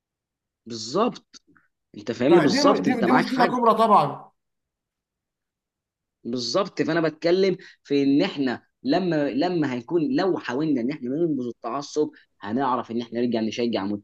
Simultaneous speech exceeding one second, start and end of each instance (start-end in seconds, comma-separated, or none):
2.3-3.6